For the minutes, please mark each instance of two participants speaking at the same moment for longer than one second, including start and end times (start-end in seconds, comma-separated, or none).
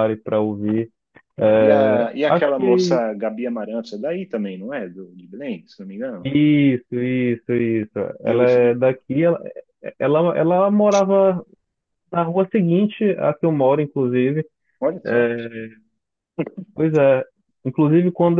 1.6-3.0